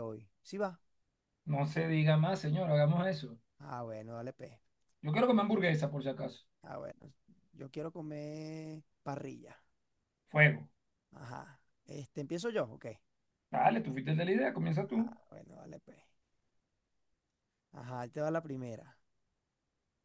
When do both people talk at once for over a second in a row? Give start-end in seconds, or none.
none